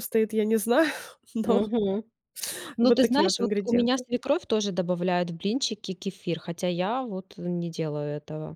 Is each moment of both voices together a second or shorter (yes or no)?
no